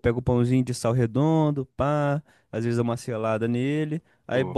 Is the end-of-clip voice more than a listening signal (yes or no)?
no